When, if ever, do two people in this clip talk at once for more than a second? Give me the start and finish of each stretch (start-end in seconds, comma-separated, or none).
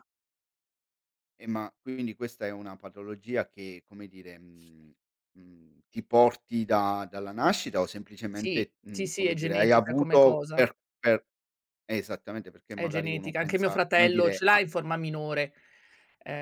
8.3-10.7, 12.7-14.6